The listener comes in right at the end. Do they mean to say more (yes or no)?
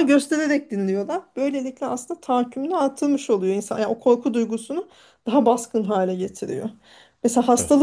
no